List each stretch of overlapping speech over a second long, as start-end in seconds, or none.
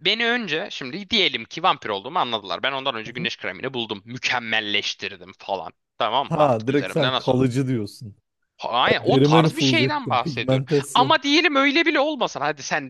6.2-7.5, 8.9-11.2